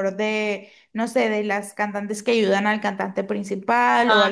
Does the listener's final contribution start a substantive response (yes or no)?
no